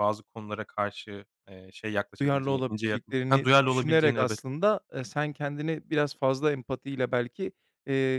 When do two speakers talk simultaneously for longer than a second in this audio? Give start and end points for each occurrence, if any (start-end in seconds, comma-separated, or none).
2.2-4.4